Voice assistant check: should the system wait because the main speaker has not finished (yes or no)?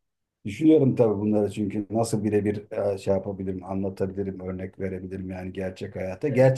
yes